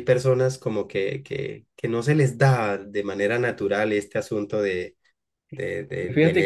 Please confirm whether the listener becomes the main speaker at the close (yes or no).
yes